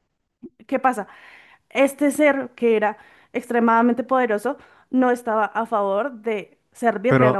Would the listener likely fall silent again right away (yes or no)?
no